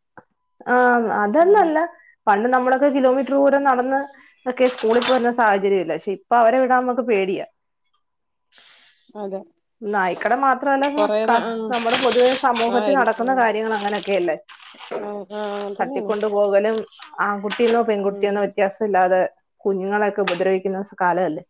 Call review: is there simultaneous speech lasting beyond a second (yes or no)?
no